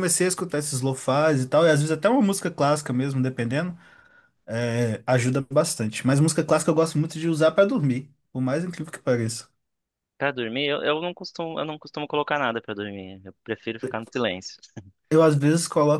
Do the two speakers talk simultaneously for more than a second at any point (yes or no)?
no